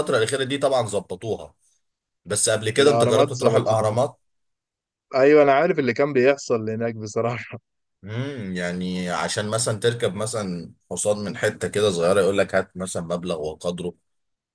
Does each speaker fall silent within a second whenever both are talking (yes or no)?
no